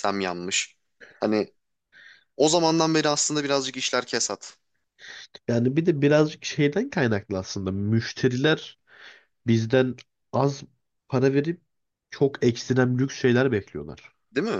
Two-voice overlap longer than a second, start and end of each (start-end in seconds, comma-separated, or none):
none